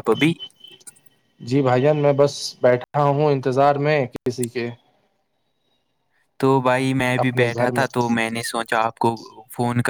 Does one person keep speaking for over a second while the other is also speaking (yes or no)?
no